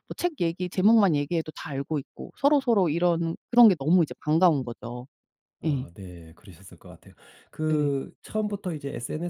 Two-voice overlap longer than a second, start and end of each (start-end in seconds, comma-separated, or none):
none